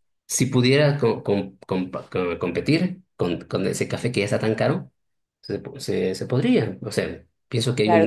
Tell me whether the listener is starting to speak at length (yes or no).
yes